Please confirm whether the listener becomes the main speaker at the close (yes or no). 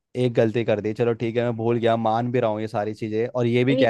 yes